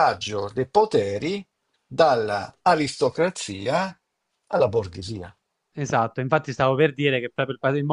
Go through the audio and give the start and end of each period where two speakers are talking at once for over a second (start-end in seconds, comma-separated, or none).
none